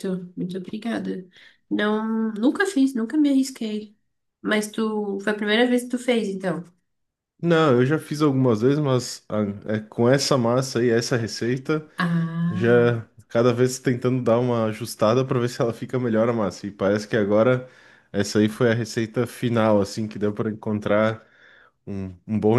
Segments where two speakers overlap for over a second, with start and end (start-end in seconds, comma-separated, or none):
none